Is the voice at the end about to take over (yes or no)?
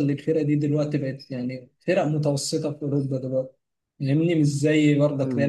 yes